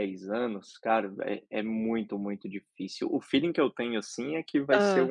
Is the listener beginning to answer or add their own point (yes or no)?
no